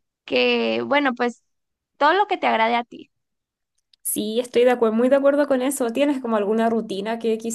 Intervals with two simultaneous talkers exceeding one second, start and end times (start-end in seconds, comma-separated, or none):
none